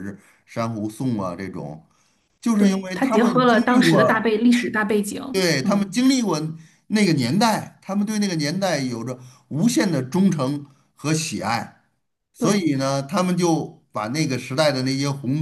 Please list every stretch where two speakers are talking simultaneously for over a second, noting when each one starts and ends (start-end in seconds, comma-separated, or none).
2.6-4.3